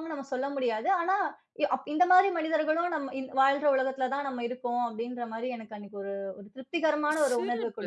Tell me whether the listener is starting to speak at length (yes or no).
yes